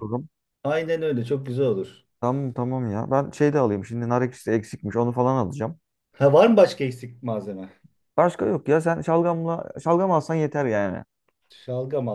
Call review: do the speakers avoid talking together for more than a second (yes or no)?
yes